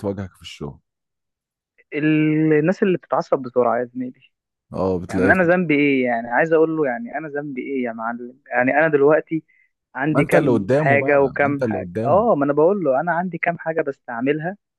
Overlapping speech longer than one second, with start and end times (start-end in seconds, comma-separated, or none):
10.1-12.3